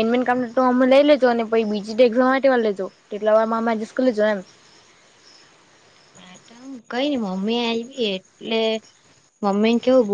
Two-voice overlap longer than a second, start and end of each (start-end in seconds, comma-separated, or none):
none